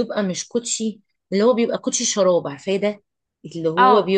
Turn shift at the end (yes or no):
no